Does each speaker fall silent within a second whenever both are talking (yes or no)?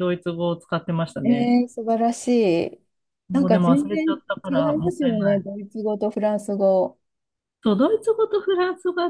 no